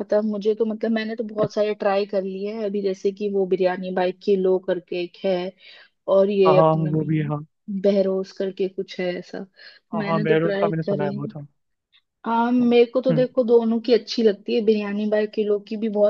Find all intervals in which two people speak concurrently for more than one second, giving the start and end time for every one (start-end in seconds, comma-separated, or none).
9.9-11.3